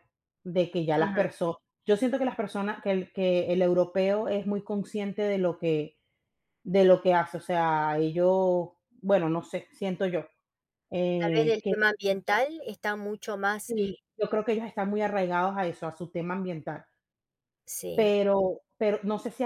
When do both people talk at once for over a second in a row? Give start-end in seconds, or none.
none